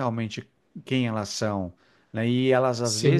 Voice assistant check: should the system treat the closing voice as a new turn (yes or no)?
no